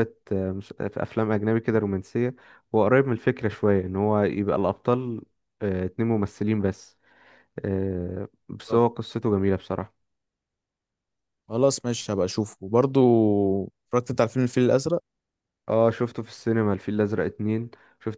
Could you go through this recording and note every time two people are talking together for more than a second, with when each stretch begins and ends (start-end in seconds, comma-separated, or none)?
none